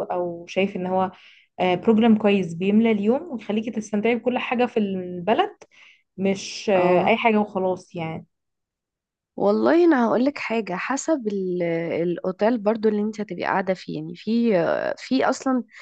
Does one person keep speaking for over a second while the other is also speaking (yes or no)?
no